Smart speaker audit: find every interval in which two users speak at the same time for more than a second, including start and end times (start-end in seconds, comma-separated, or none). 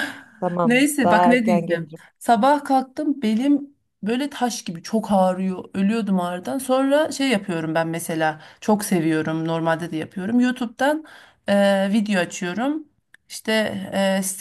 0.6-2.0